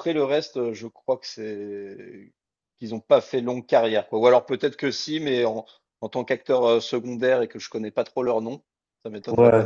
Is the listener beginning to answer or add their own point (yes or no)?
yes